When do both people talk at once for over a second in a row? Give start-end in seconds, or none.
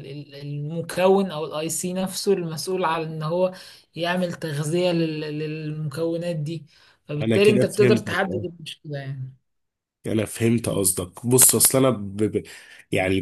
7.2-8.4